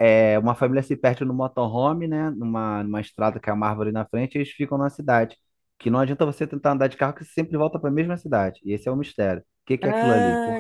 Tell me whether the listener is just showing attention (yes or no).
no